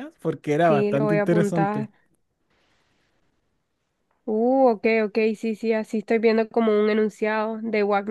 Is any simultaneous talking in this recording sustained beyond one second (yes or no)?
yes